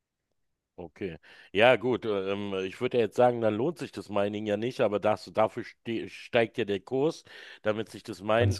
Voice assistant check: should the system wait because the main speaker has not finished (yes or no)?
yes